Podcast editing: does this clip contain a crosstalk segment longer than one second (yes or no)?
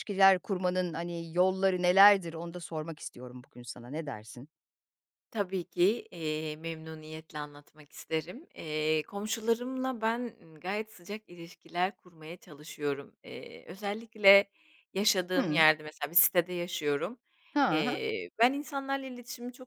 no